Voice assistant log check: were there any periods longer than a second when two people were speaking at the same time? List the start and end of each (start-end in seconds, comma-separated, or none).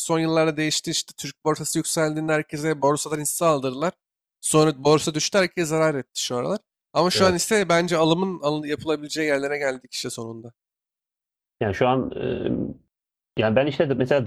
none